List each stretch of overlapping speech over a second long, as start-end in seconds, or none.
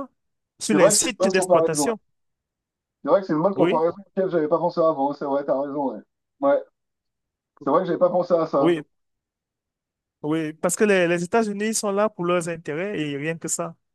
0.7-1.9